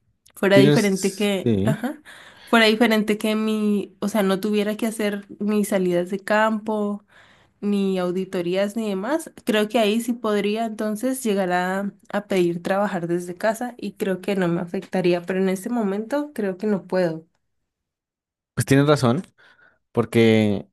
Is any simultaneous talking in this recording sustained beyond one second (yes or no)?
yes